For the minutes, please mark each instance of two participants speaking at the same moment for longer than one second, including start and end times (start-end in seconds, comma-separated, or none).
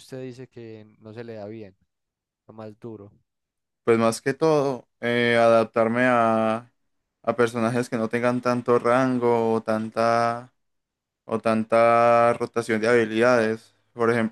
none